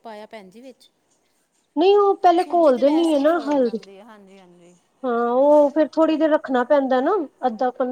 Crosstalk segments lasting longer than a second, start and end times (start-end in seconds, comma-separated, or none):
2.4-3.8